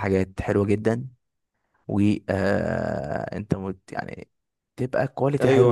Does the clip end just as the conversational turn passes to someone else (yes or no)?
no